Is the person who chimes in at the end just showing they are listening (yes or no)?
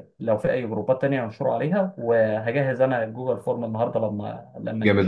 no